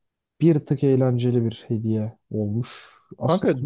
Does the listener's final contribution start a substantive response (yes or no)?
yes